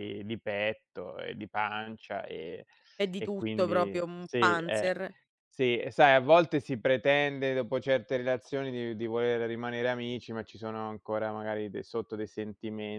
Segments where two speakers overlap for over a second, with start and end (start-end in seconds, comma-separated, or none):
3.2-4.9